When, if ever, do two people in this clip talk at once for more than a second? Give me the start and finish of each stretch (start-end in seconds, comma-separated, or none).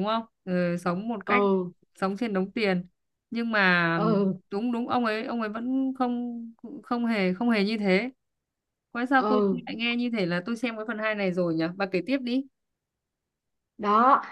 none